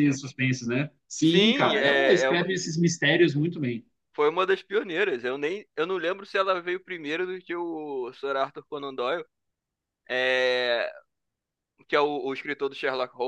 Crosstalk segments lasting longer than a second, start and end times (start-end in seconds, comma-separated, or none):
1.2-2.5